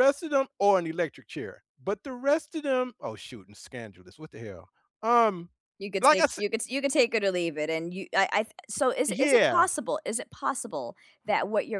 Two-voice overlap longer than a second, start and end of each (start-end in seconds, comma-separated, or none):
none